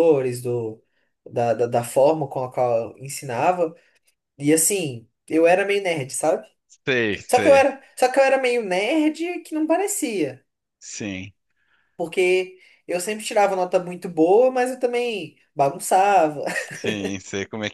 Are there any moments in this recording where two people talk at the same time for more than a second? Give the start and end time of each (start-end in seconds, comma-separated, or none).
none